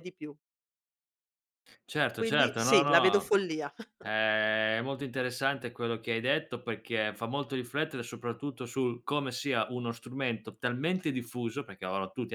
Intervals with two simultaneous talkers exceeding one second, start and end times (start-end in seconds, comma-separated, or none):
2.1-3.4